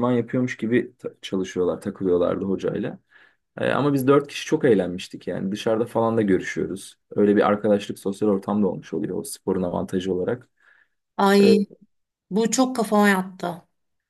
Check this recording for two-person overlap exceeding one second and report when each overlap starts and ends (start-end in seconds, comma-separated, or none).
none